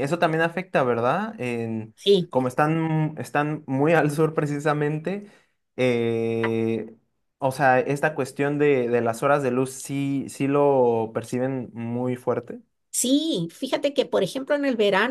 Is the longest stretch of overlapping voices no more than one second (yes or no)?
yes